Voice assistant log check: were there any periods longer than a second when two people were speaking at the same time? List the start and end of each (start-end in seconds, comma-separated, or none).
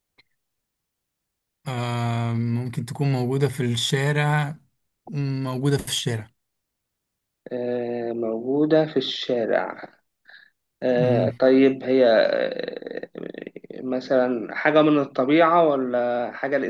none